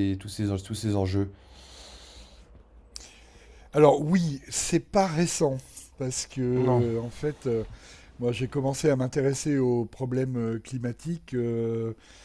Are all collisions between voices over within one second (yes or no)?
yes